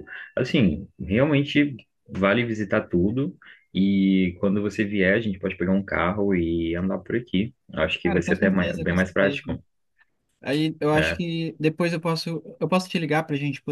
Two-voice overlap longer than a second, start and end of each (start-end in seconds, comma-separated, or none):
8.0-9.4